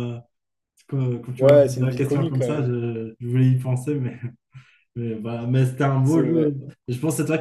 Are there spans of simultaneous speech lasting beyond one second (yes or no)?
yes